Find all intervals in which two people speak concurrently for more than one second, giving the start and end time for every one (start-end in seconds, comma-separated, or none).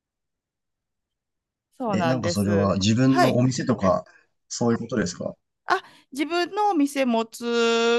1.9-3.4